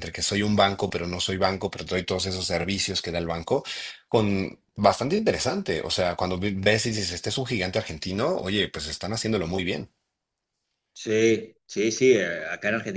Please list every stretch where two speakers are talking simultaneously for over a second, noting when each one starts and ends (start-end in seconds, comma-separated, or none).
none